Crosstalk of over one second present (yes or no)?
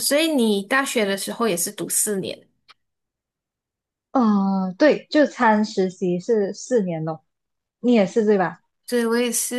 no